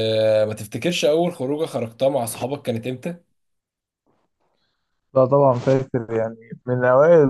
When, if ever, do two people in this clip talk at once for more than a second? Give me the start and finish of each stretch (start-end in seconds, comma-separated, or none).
none